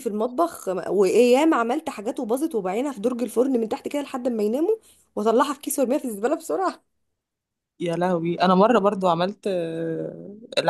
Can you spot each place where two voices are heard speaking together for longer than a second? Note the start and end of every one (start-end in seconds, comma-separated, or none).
none